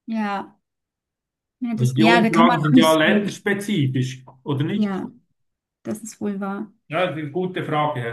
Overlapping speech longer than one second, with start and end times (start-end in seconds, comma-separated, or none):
1.8-3.4